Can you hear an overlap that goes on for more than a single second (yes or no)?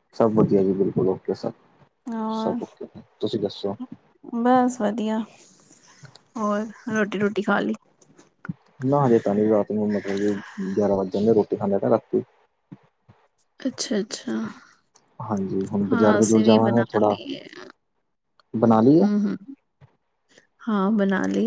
yes